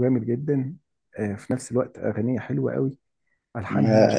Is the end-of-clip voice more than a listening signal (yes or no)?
no